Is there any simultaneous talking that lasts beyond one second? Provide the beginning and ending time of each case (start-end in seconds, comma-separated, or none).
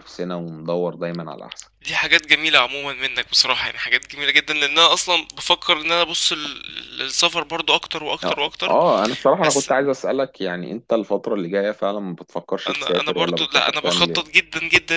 12.7-14.3